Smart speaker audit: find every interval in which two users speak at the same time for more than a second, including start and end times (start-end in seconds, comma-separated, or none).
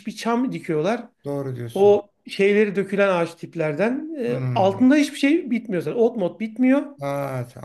none